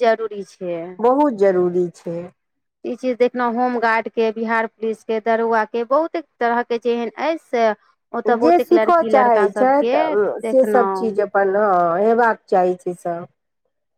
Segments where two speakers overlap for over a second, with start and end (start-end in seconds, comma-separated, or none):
8.4-11.2